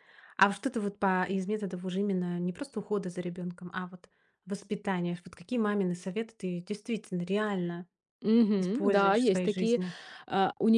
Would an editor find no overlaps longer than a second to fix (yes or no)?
no